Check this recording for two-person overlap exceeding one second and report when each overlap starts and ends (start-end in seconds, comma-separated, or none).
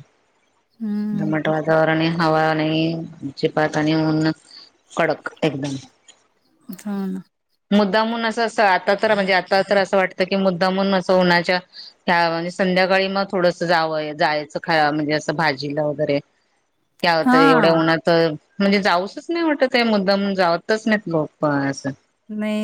none